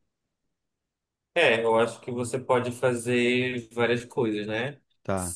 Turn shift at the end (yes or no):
no